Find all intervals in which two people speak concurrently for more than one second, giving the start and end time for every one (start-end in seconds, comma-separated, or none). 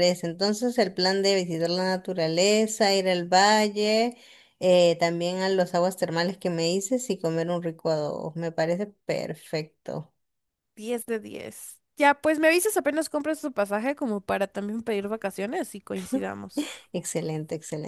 none